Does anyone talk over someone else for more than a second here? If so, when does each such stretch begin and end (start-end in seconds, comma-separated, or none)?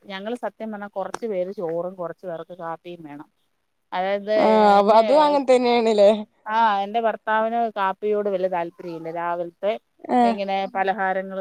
none